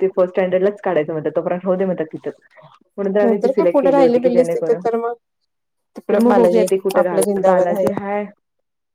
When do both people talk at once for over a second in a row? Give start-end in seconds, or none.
3.2-4.8, 6.1-7.9